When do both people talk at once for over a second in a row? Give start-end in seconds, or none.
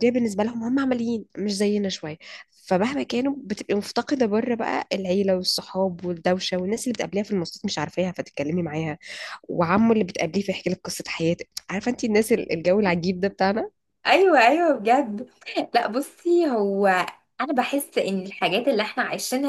none